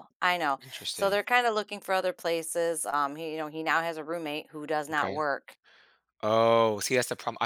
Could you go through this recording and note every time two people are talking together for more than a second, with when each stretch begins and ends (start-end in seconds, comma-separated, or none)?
none